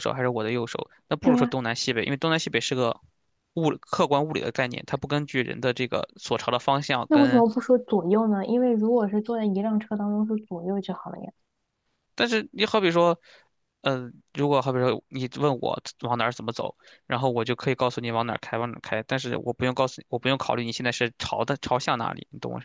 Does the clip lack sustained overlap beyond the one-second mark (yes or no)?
yes